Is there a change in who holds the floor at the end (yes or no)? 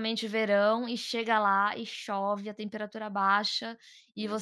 no